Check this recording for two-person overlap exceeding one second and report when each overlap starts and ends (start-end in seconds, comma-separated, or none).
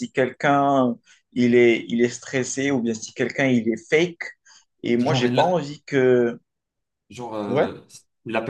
none